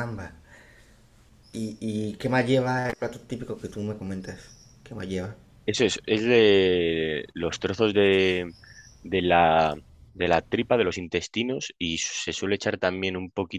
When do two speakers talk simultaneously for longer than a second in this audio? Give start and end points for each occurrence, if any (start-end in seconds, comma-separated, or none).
none